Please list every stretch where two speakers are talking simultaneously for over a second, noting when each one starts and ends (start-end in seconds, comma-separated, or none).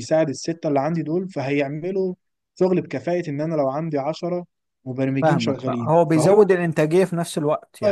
5.2-6.5